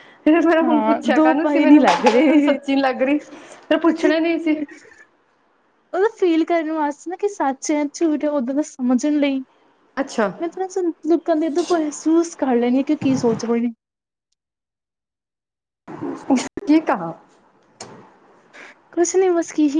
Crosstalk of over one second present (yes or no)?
yes